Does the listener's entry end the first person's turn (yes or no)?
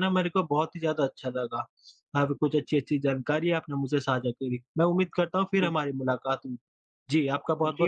yes